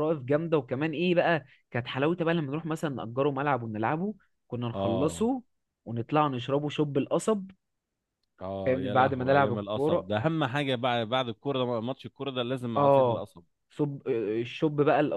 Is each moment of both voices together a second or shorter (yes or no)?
no